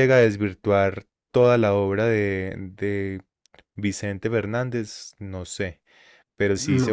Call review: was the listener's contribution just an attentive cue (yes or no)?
yes